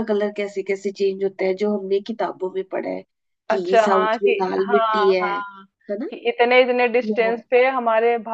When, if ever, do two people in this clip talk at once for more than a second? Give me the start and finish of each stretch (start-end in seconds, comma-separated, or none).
3.5-5.3